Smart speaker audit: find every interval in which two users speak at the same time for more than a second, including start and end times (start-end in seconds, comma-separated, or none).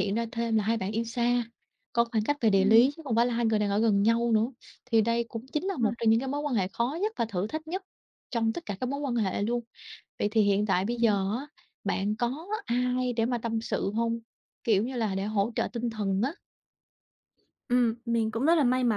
none